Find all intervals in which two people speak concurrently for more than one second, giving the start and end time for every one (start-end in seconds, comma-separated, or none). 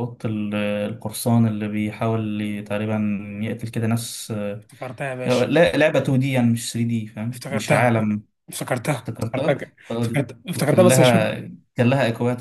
9.0-11.3